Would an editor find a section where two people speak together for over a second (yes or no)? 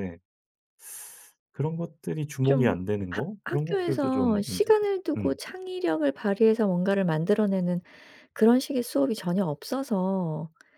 yes